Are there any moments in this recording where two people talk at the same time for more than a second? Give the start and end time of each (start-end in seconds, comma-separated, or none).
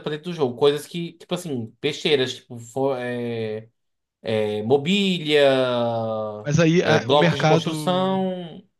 6.8-8.2